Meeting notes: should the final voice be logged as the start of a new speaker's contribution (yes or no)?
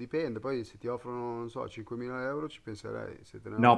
yes